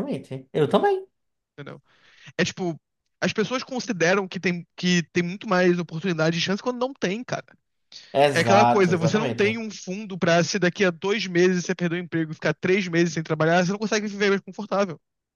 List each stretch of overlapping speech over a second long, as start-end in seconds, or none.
8.3-9.6